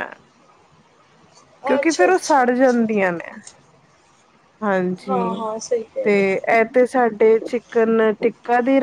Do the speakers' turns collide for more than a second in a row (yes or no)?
yes